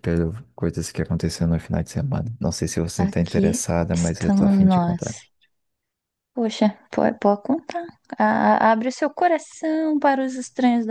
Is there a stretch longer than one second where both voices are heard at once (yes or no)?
yes